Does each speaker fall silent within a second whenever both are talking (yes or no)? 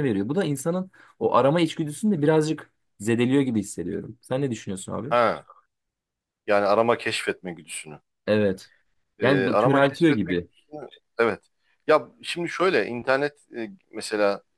no